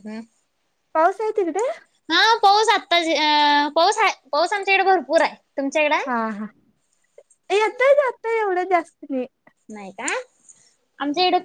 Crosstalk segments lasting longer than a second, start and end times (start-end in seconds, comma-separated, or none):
none